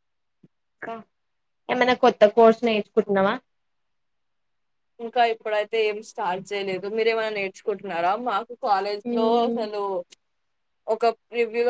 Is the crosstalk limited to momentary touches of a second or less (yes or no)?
yes